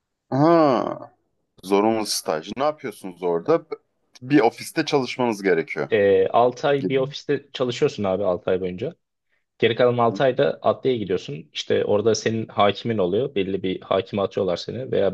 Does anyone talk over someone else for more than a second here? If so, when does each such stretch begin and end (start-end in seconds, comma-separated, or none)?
none